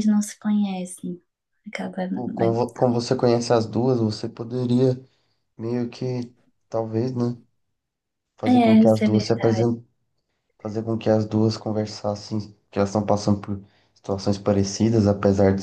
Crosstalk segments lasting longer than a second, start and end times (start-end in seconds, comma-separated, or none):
8.4-9.7